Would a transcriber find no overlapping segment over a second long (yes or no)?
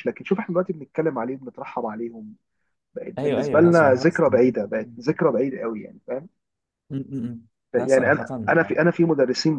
no